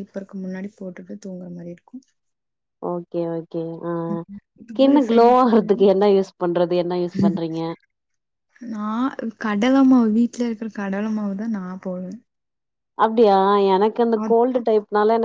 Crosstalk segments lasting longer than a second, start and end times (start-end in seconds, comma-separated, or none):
4.1-5.8